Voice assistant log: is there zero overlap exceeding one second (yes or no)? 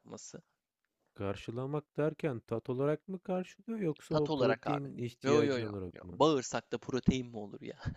no